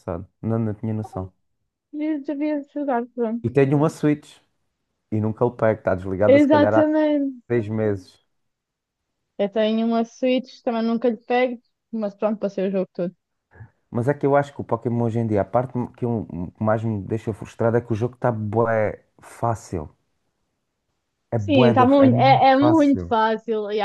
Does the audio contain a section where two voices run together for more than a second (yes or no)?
yes